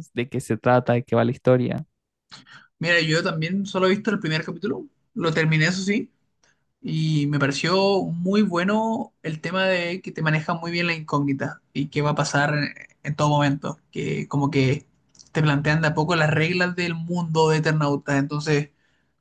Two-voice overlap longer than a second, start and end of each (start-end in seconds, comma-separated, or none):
none